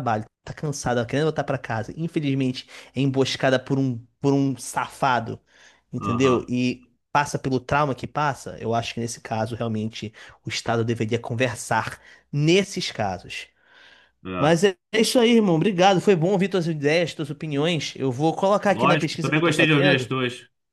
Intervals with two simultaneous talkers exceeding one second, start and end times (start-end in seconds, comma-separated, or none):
18.7-20.1